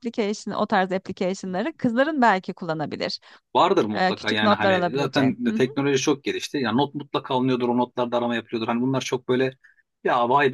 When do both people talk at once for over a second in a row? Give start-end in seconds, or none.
4.0-5.6